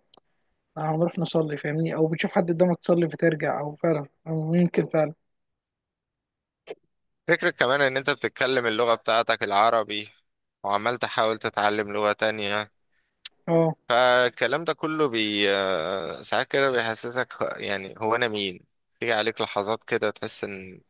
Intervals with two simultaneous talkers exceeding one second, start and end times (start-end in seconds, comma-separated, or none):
none